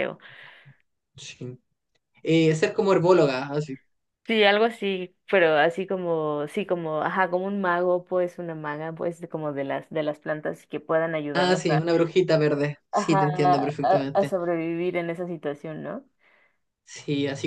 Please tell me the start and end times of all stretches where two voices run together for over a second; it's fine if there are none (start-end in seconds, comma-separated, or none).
12.9-14.3